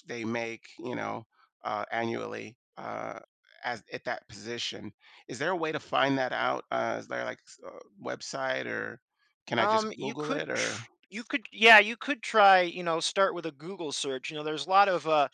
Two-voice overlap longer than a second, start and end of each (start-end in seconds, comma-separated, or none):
9.6-10.8